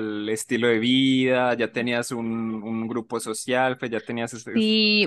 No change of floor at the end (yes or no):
no